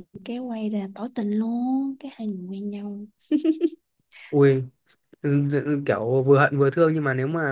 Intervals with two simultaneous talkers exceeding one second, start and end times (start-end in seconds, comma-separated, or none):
none